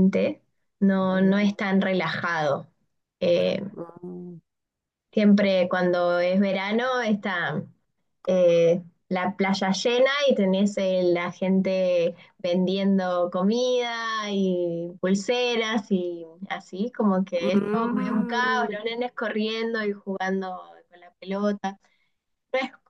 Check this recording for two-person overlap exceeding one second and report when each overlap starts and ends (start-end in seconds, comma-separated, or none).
17.4-18.8